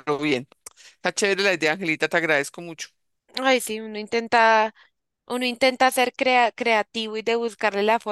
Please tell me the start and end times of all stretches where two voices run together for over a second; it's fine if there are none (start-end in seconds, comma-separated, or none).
none